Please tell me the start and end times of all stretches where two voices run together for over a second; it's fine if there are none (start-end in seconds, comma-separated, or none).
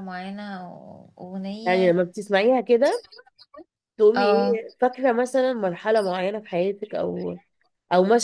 none